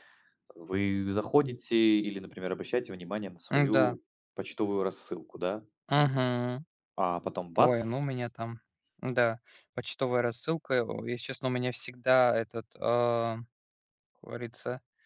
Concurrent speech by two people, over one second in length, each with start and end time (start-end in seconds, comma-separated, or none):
none